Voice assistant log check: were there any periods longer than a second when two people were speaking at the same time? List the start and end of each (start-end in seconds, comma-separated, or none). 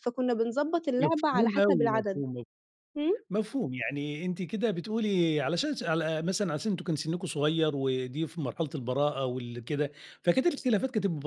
1.0-2.2